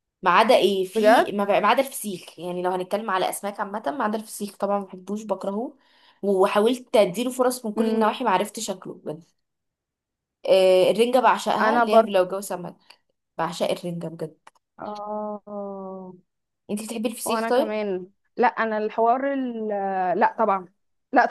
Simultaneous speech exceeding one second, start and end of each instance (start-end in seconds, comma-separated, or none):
none